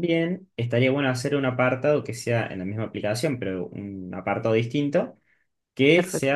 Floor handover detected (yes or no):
no